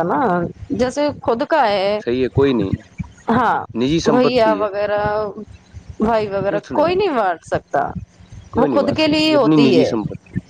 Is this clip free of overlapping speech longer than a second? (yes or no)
no